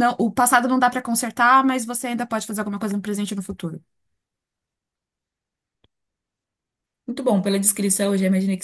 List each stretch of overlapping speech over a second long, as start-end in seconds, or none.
none